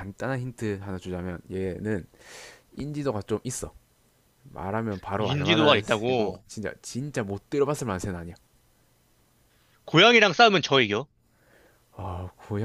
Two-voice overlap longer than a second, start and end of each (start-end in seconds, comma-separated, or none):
5.2-6.4